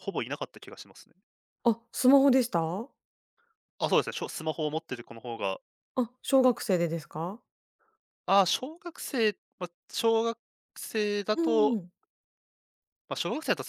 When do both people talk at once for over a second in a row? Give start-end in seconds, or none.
none